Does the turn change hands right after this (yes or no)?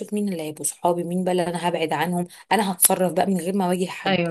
no